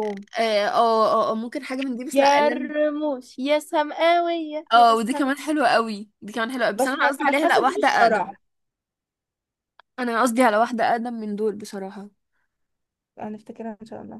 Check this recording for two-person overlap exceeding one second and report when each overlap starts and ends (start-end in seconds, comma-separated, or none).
6.8-8.3